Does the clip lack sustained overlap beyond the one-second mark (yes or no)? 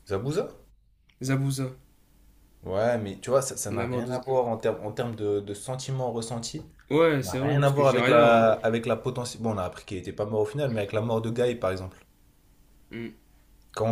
no